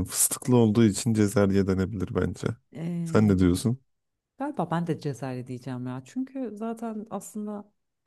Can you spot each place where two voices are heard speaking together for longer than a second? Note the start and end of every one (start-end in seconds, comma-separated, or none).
none